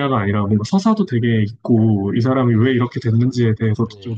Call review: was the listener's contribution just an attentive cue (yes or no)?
yes